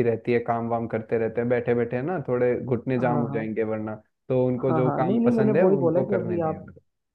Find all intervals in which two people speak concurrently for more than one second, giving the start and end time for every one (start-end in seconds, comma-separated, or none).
4.7-6.6